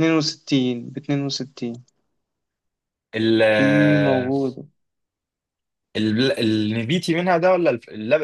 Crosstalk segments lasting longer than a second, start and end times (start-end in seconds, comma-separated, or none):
none